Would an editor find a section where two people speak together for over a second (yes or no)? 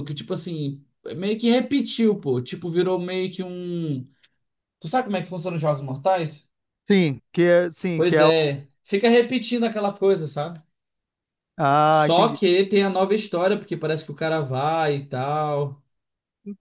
no